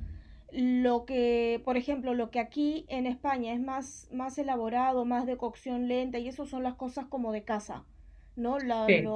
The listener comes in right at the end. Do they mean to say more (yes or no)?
no